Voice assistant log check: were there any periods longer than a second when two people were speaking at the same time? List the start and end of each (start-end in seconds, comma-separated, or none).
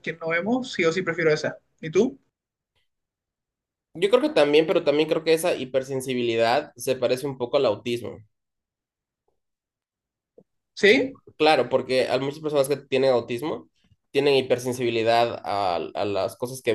none